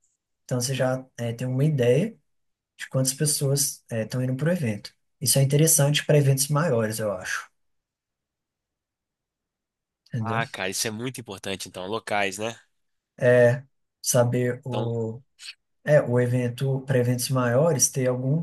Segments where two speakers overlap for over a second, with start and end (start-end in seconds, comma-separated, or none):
none